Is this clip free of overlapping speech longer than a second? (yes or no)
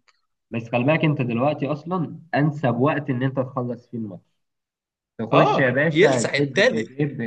no